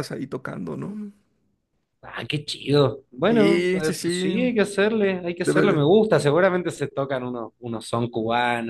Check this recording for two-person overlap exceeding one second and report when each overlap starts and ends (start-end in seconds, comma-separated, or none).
3.3-4.5